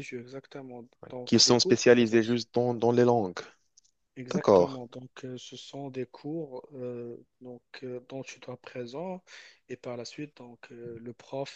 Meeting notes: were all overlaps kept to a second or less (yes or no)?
no